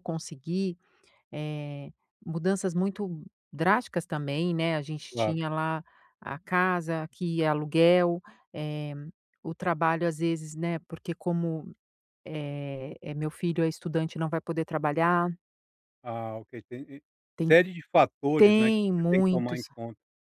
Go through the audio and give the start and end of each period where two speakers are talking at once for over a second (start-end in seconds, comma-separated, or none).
18.4-19.6